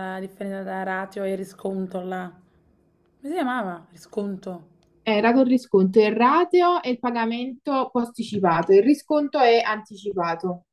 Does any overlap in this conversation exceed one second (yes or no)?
no